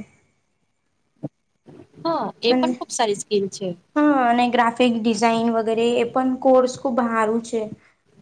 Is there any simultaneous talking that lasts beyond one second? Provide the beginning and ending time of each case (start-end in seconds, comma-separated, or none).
none